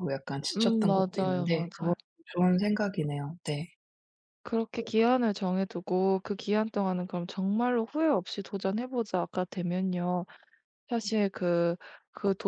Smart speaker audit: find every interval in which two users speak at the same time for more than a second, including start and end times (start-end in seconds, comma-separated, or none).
0.6-1.9